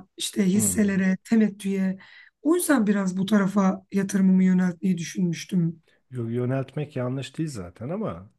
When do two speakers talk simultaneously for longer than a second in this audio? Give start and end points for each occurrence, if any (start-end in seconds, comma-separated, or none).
none